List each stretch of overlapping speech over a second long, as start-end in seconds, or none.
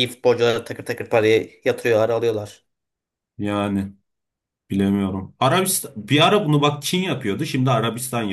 none